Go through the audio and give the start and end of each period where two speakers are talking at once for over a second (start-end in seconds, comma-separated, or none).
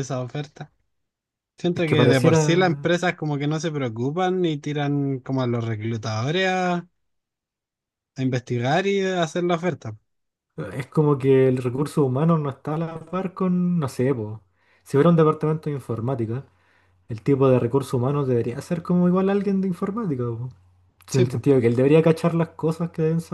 1.7-3.0